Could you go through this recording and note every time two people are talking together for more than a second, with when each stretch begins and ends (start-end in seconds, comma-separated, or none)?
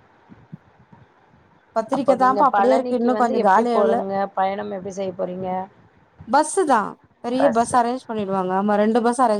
1.9-4.0